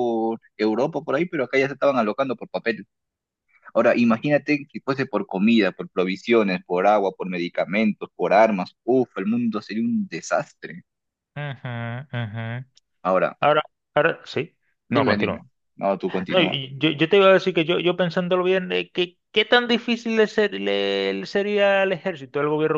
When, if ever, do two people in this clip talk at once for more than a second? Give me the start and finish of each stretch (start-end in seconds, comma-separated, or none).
none